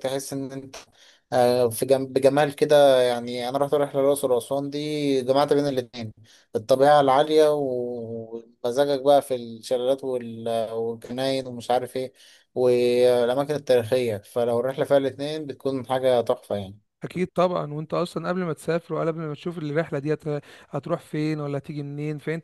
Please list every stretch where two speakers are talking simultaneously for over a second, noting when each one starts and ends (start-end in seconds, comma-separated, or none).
none